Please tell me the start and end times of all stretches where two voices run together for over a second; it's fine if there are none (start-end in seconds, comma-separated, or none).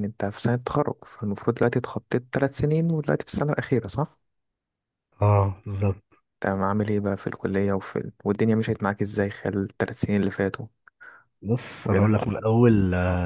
none